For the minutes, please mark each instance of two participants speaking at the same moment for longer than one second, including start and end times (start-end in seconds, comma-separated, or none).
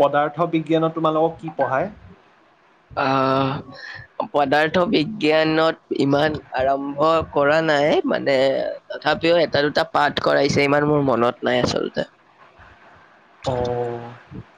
none